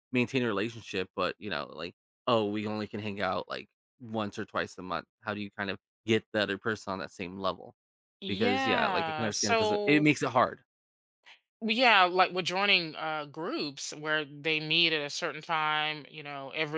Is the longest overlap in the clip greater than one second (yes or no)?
yes